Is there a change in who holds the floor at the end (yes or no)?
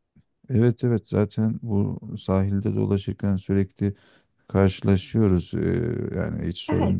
no